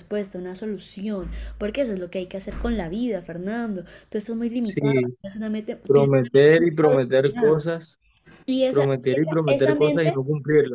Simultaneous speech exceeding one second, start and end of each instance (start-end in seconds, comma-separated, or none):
5.8-7.7, 8.7-10.1